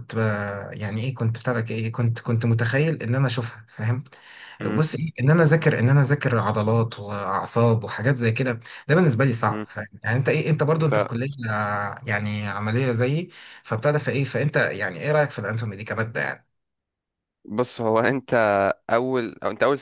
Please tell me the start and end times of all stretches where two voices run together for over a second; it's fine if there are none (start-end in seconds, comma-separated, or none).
none